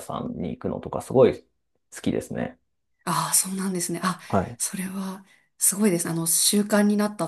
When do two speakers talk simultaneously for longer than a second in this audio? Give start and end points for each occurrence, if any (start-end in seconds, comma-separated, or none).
none